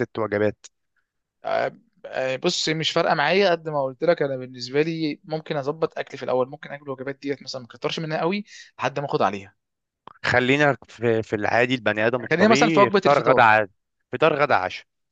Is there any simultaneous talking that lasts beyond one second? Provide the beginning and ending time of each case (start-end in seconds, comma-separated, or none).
12.2-13.4